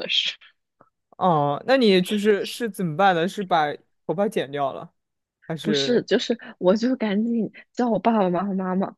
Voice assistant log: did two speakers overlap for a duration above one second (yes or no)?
no